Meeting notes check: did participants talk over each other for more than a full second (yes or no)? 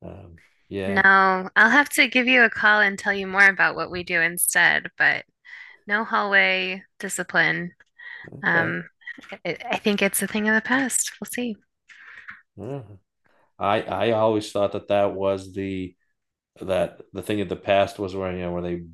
no